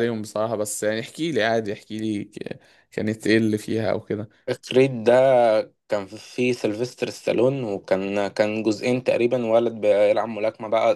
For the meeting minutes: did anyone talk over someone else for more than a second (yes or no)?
no